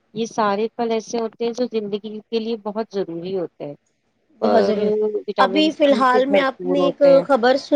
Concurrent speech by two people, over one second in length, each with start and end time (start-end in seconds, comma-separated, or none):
5.5-7.2